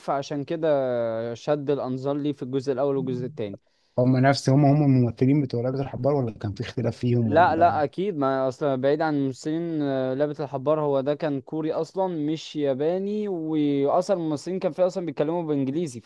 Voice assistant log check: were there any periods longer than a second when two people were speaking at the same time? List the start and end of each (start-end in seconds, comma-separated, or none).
none